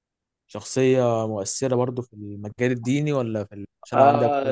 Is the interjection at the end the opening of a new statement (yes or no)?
yes